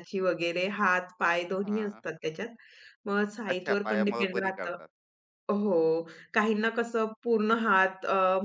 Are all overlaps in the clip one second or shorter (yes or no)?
no